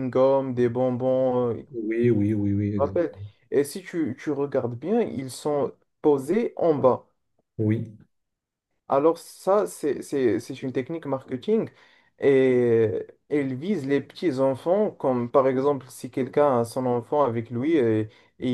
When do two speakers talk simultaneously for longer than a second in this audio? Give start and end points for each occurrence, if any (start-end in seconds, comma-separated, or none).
none